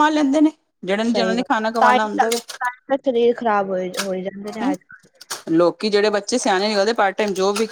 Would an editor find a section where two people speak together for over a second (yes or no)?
yes